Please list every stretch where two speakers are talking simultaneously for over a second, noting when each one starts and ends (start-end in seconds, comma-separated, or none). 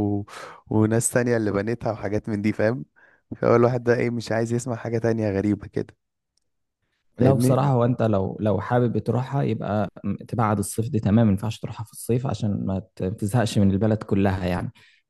none